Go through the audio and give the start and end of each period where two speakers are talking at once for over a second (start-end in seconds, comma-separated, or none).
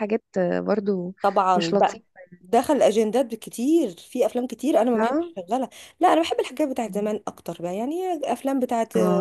none